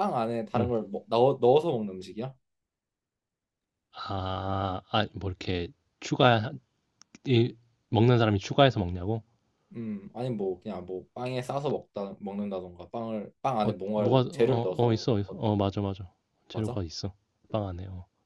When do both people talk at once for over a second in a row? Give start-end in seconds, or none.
13.6-15.4